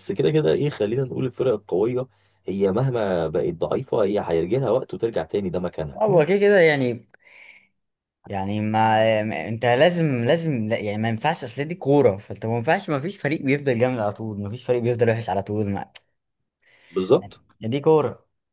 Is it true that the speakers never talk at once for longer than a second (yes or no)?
yes